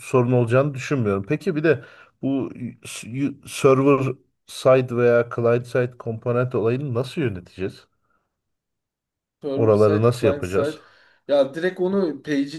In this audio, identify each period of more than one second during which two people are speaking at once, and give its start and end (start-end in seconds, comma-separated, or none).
9.6-10.8